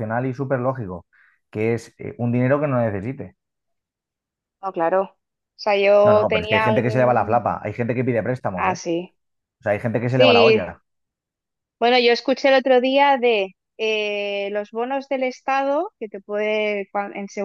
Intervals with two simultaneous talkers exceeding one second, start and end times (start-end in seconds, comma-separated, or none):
6.0-7.4